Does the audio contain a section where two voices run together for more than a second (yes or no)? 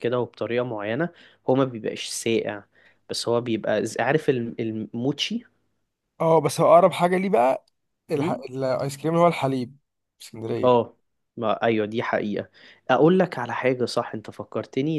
no